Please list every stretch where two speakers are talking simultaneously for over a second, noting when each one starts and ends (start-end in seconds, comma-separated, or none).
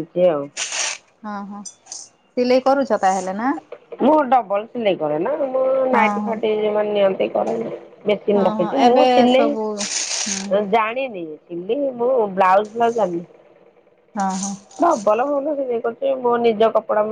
8.4-10.5